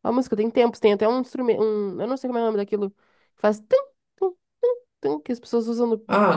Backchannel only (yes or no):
no